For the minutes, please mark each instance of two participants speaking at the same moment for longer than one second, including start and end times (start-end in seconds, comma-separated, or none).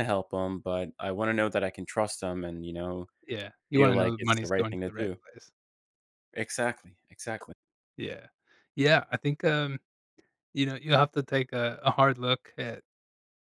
3.8-5.2